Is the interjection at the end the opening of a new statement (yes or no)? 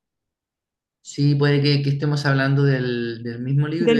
no